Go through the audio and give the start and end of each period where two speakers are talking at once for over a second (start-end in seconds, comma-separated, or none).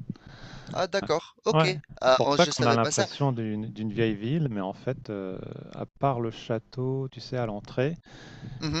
1.5-3.0